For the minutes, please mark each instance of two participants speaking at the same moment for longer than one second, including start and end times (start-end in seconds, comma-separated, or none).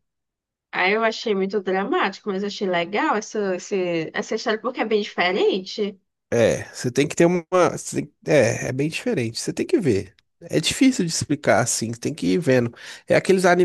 none